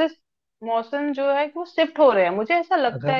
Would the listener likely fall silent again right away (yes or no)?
yes